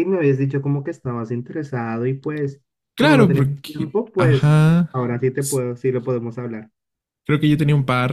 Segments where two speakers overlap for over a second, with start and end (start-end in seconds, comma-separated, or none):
3.0-4.6